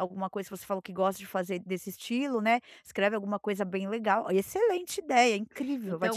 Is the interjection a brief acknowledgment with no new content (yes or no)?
no